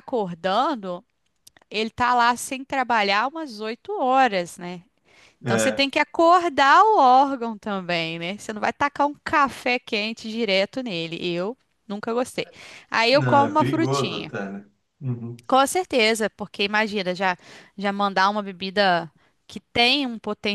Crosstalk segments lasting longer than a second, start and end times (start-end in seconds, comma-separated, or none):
13.1-14.3